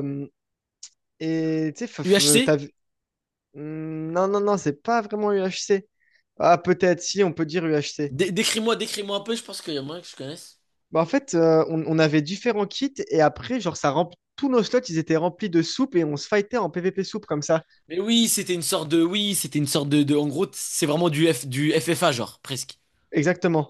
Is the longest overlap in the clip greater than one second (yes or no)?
no